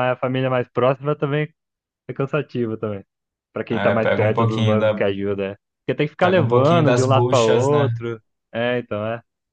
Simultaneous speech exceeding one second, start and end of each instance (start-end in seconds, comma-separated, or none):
3.7-5.0, 6.2-7.9